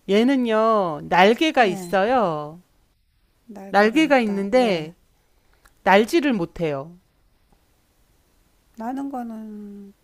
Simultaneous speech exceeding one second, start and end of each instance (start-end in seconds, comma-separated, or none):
3.7-4.9